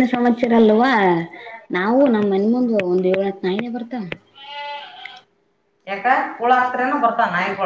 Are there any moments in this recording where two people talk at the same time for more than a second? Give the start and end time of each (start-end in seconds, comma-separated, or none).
none